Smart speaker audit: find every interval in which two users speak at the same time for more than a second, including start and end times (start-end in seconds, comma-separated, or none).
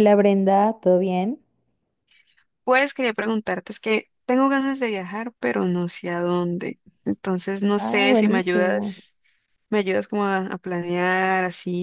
7.8-8.9